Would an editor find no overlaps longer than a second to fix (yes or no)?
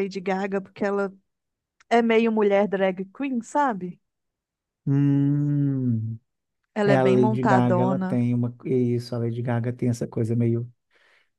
no